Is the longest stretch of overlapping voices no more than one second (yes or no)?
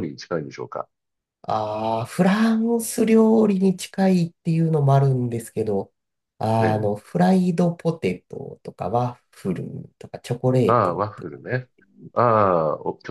yes